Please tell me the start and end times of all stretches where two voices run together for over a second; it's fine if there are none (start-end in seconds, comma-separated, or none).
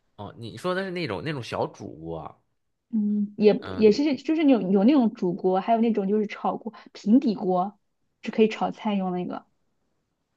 none